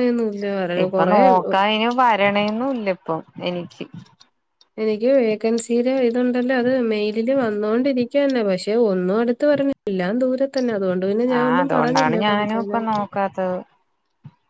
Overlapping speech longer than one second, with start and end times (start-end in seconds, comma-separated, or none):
11.4-12.8